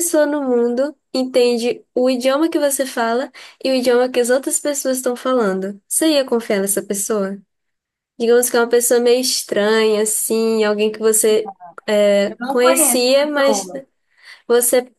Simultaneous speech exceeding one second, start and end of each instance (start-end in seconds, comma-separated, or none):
12.3-13.7